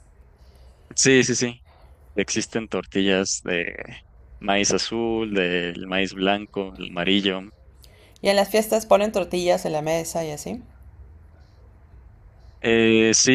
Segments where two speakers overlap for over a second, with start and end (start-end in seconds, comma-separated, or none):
none